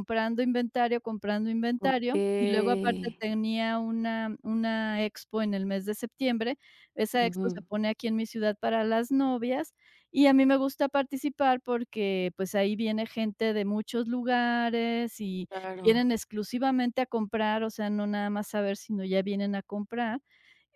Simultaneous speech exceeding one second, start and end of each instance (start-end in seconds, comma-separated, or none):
1.9-3.2